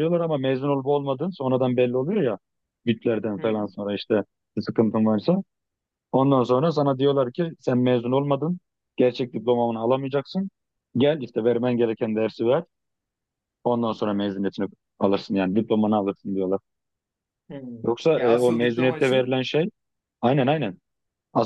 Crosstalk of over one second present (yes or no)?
yes